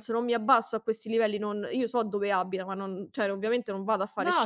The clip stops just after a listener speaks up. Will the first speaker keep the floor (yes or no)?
yes